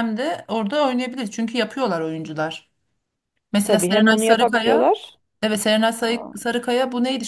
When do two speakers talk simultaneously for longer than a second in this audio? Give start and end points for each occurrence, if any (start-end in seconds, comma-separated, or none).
3.6-4.9